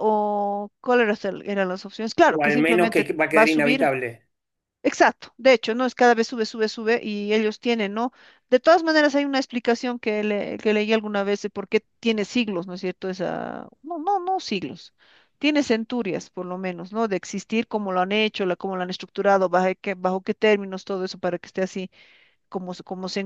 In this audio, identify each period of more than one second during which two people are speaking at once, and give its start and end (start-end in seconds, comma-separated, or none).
2.2-3.9